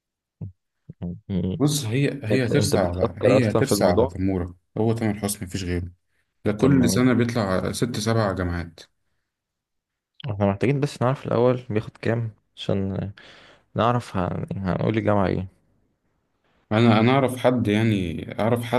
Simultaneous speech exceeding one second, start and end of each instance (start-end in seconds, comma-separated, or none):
2.3-4.2